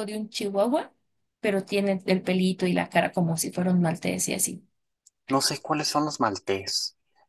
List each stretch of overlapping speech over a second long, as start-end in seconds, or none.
none